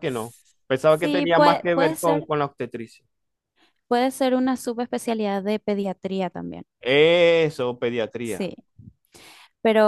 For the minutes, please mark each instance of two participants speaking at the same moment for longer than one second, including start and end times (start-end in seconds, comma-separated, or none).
0.9-2.3